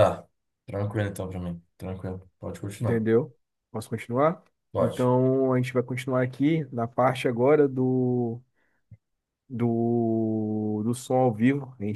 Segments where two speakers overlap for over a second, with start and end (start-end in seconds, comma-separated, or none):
none